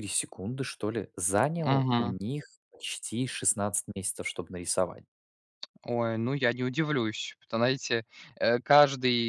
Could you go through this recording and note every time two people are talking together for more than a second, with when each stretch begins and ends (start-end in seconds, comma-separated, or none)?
none